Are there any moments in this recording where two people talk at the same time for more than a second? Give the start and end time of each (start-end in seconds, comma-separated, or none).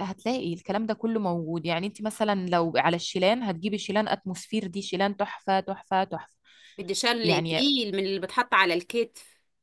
none